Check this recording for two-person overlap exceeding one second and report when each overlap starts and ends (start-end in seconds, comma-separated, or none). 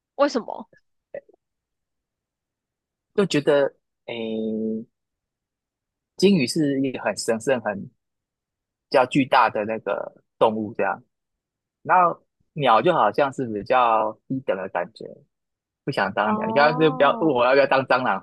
16.2-17.6